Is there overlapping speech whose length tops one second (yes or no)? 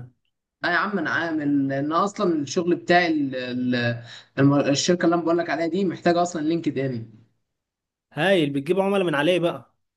no